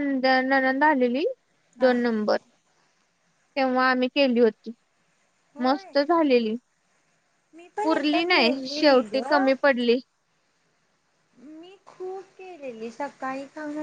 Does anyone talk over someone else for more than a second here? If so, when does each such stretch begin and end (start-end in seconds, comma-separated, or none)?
7.8-9.2